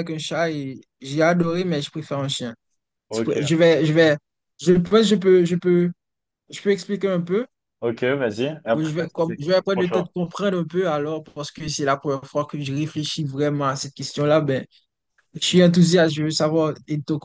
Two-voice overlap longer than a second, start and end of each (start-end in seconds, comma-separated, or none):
8.7-10.1